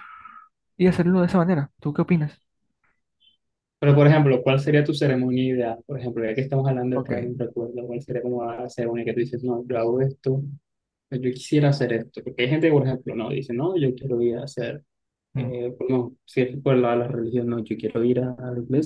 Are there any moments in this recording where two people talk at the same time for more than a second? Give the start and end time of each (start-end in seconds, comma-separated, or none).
none